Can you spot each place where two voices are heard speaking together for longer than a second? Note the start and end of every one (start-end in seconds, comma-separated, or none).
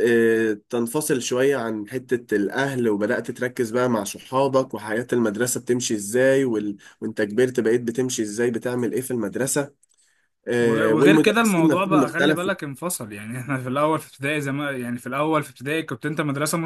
10.6-12.5